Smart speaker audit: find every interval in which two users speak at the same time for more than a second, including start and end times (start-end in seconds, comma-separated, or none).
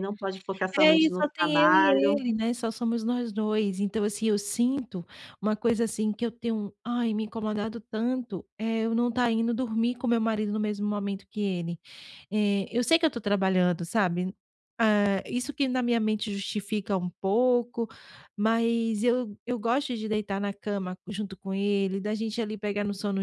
0.8-2.2